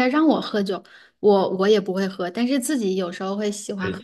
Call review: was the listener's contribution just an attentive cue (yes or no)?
no